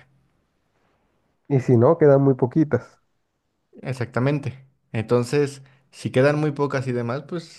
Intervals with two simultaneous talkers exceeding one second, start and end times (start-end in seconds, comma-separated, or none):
none